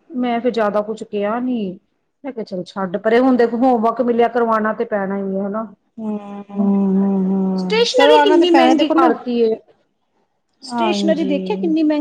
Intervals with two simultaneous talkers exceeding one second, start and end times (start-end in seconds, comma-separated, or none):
7.6-9.1